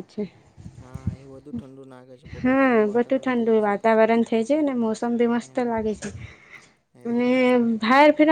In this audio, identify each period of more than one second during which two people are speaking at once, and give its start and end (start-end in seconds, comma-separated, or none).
2.4-4.0